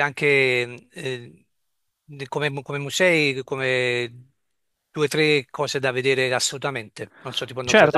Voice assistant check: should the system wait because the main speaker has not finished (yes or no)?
no